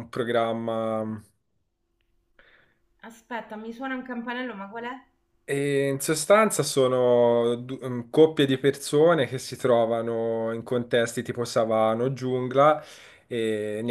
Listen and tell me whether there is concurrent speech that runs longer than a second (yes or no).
no